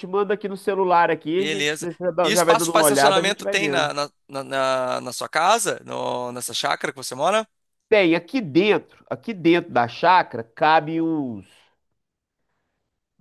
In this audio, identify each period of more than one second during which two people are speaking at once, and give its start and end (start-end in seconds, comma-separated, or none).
1.4-3.9